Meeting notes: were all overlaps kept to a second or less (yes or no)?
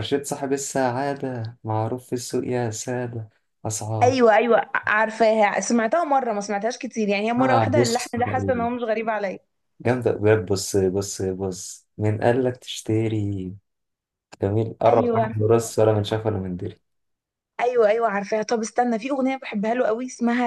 no